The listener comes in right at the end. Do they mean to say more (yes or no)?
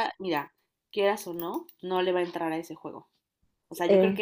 no